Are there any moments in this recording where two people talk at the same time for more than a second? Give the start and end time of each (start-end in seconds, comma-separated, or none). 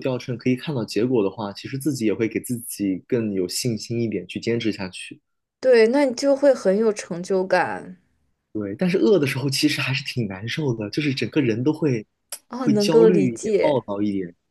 12.6-13.8